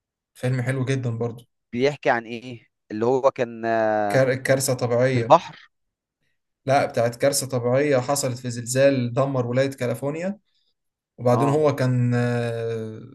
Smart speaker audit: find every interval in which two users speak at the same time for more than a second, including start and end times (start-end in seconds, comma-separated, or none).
none